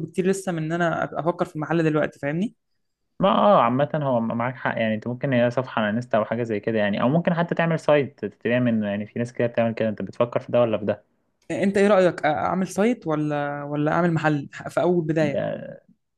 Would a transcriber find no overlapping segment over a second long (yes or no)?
yes